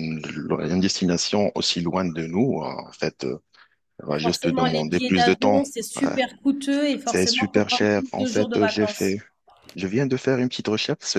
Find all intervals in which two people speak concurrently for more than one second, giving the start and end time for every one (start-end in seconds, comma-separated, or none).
4.2-6.0, 7.0-9.2